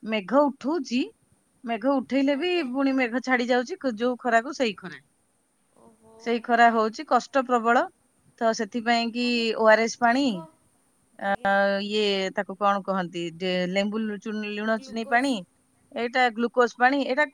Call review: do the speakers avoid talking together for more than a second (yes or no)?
yes